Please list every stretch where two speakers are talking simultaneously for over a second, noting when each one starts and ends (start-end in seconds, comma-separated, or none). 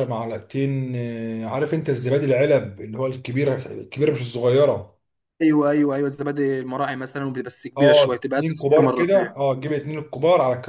7.8-9.3